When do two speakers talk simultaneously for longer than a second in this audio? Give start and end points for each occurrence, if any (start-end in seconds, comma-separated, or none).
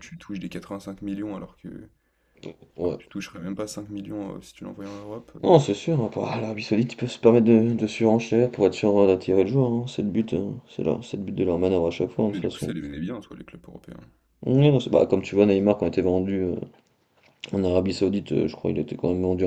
none